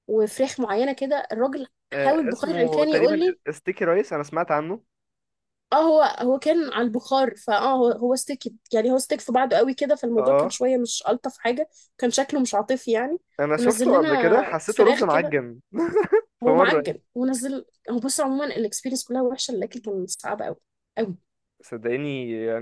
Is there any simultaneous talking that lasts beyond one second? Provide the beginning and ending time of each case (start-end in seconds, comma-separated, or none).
1.9-3.4, 13.6-15.4